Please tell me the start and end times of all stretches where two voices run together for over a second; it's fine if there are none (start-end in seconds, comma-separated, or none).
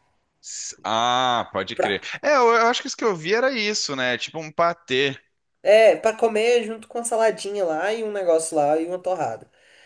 none